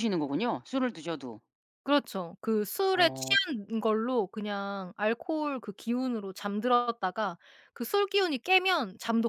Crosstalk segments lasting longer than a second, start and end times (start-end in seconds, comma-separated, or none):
none